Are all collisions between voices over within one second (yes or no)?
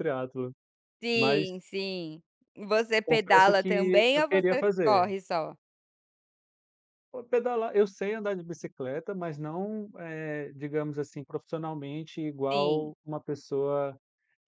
no